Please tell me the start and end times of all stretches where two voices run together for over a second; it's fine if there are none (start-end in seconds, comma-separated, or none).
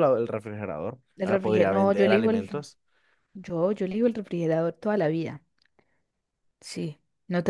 1.1-2.6